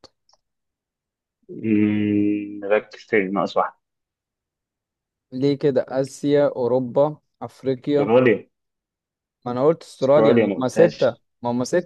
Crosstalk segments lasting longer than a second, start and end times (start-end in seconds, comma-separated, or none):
10.0-11.2